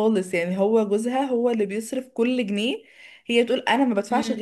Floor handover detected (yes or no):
no